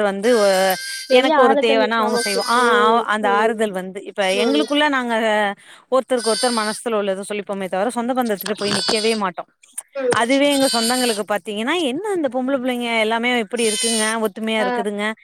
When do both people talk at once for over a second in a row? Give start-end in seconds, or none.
1.2-3.5